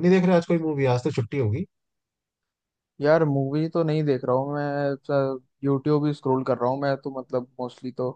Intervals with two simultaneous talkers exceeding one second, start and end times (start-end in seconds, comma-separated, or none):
none